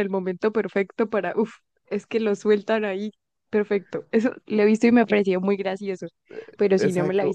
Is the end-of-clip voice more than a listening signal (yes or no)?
yes